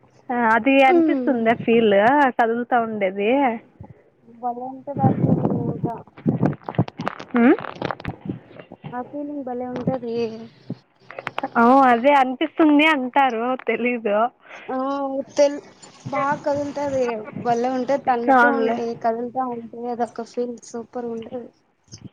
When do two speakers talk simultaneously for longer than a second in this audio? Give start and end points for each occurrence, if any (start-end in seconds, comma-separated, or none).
none